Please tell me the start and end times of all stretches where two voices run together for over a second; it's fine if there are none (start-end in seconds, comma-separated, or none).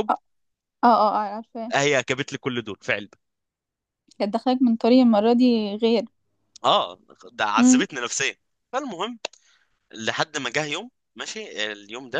none